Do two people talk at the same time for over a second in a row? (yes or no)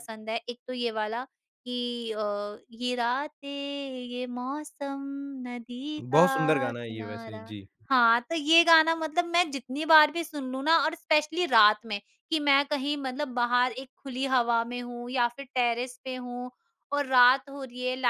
yes